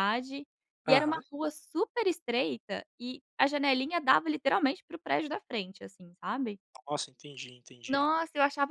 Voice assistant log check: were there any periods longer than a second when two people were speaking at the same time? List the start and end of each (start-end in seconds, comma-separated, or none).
none